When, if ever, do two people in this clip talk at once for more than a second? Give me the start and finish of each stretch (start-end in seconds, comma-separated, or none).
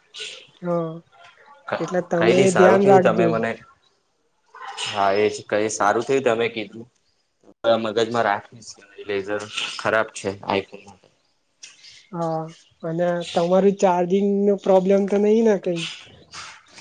1.8-3.3